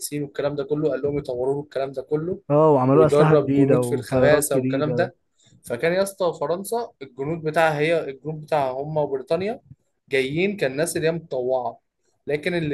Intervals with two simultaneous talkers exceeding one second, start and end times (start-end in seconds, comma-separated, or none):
2.9-5.1